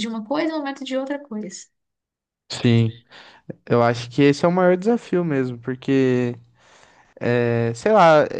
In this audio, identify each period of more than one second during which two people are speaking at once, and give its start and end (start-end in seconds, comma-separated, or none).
none